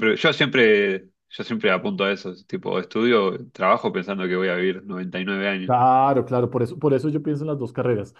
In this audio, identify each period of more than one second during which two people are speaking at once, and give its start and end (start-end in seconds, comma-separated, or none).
none